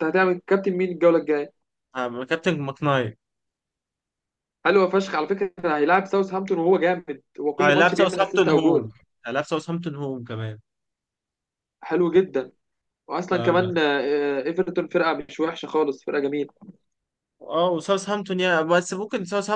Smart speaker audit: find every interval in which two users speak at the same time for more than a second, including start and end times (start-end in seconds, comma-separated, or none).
7.6-8.9